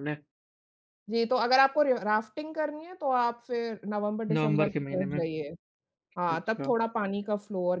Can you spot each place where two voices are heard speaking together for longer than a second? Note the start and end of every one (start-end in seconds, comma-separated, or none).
4.3-5.5